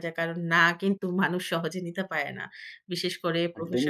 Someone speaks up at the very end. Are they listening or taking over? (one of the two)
listening